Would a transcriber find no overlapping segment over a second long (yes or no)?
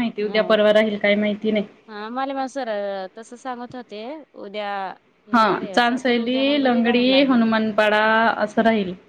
no